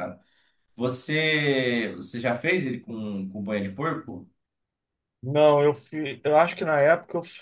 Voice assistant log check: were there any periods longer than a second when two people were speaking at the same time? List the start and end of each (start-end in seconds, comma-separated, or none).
none